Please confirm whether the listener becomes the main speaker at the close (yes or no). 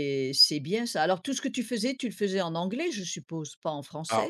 yes